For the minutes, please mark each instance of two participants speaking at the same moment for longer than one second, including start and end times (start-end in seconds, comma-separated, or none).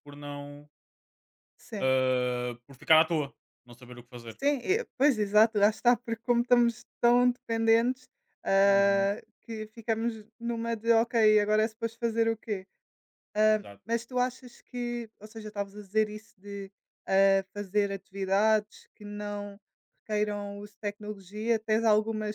none